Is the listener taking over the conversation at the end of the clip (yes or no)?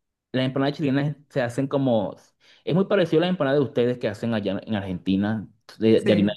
no